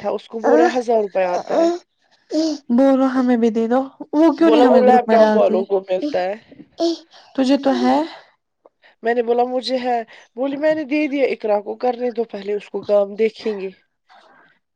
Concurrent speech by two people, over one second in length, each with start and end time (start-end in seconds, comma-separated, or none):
4.5-6.2